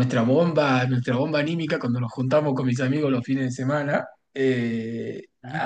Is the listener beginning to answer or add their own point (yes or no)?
no